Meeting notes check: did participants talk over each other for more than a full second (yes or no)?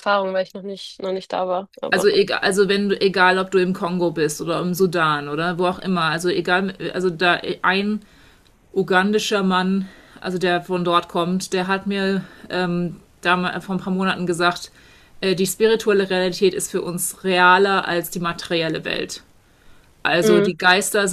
no